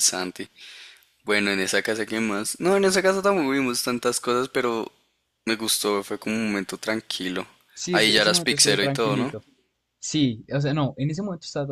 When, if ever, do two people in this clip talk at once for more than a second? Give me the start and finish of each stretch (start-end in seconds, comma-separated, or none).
7.9-9.3